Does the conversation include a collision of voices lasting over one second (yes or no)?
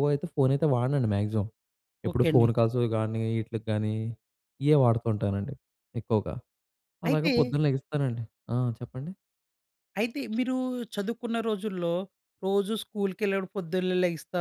no